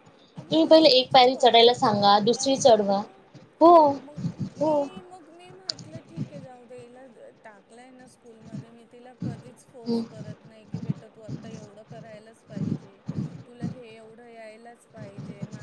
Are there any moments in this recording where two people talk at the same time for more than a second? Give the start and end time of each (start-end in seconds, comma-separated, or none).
0.7-3.0